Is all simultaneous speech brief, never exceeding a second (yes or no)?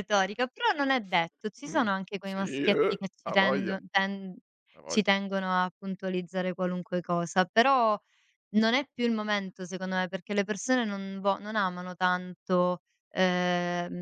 no